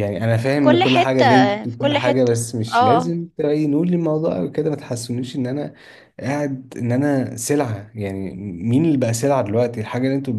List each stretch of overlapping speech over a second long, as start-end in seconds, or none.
0.5-3.1